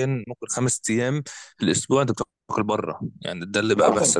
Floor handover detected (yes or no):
yes